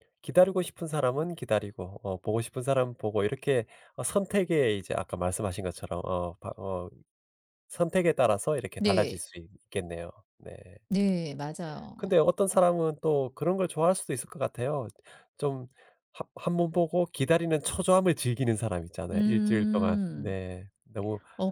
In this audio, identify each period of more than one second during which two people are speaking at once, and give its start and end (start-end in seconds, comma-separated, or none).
19.1-20.4